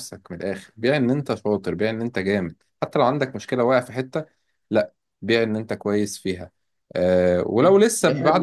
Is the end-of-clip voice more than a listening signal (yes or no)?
no